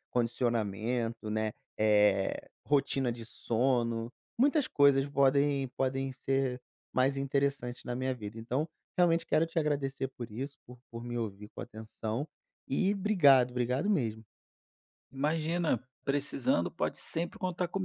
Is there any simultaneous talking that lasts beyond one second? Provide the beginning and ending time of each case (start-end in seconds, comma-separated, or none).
none